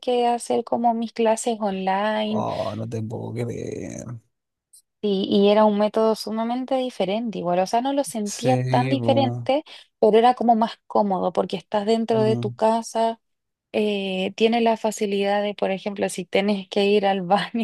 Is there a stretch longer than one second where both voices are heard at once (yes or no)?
yes